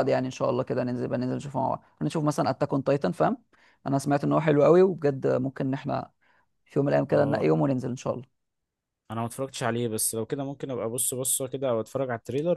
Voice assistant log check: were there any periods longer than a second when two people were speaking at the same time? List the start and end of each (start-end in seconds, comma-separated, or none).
none